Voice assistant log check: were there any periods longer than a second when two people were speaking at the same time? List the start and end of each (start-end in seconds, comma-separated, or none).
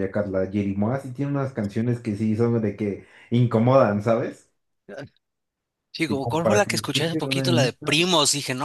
6.1-7.8